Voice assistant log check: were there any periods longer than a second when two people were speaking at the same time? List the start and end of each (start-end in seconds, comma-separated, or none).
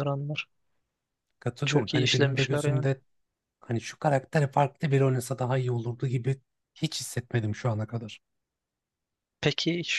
1.6-2.9